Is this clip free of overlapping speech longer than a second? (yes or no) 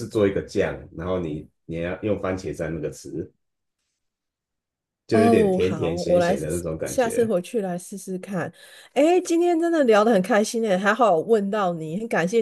no